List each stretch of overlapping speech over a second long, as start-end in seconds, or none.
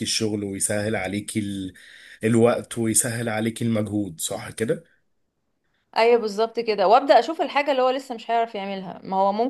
none